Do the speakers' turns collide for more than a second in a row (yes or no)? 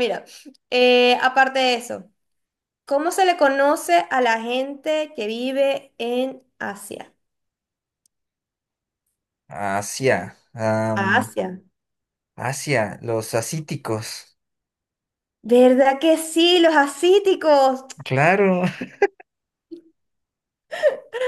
no